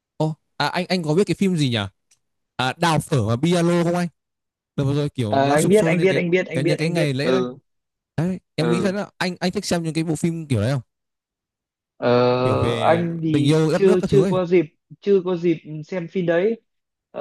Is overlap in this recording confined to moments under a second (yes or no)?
no